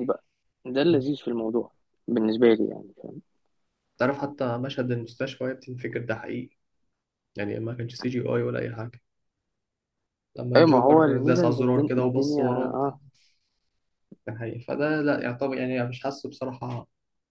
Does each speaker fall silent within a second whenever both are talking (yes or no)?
no